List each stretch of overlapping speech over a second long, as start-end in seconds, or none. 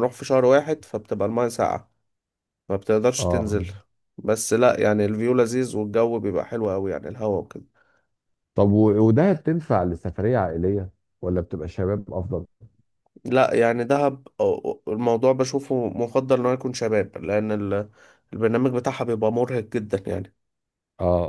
none